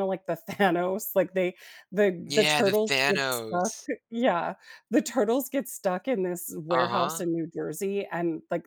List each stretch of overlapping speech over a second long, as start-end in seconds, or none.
2.3-3.7